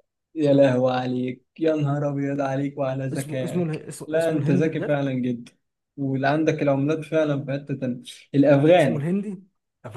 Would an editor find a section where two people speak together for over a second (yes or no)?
yes